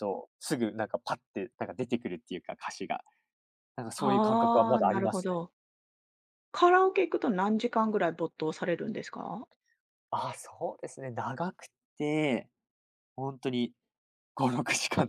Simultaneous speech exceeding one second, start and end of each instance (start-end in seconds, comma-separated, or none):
4.0-5.4